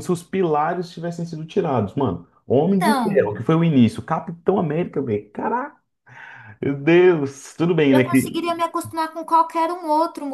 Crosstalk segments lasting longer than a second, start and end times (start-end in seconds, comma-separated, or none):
none